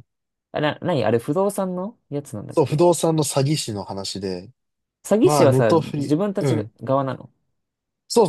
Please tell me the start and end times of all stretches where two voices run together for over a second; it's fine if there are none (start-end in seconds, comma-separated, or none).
5.2-6.7